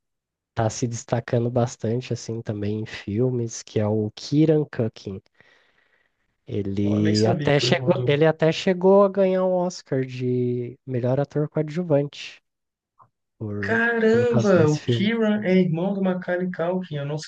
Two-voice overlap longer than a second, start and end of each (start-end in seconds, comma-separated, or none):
6.8-8.1, 13.6-15.1